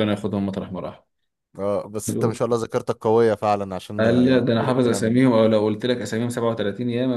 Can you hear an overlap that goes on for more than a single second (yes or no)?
yes